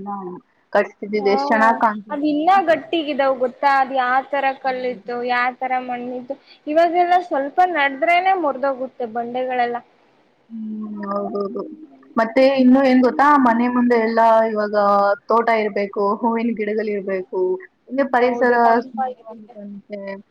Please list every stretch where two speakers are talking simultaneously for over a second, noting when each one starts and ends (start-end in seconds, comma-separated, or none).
18.2-19.5